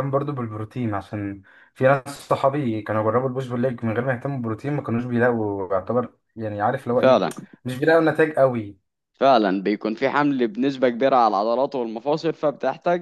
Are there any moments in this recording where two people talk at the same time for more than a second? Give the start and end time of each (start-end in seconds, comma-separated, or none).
none